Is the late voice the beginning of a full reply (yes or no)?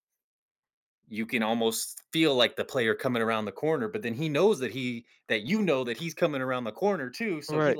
no